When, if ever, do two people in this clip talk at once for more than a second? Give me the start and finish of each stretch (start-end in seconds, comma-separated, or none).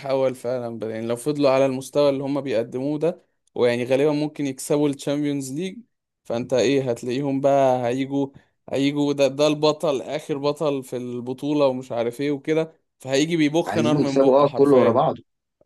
13.7-15.0